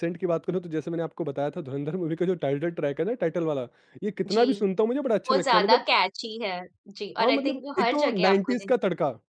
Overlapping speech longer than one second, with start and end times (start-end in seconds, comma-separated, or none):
7.2-8.7